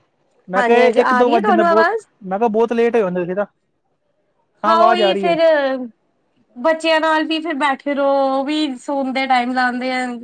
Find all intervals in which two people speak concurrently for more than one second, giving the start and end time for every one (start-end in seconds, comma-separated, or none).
0.6-1.9